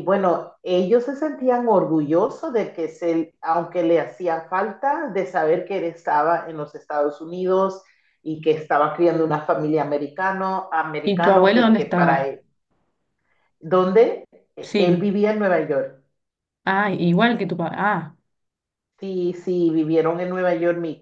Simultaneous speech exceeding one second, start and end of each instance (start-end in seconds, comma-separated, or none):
11.0-12.3